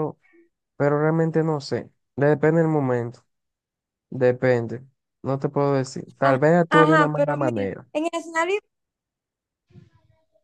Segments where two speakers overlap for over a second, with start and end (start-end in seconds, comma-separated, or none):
6.2-7.9